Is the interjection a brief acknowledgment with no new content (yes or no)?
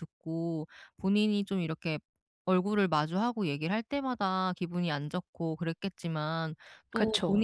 yes